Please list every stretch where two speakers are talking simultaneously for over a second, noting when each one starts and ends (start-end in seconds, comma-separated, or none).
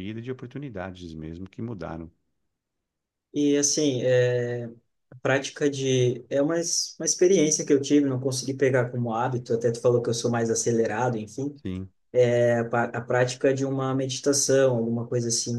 none